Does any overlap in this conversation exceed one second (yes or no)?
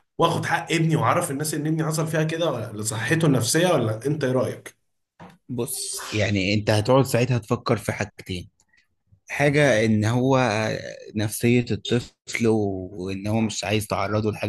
no